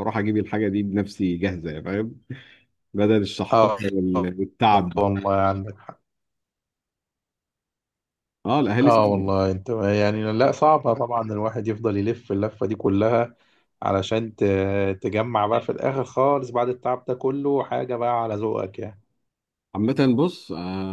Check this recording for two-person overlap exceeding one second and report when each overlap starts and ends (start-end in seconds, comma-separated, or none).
3.5-5.0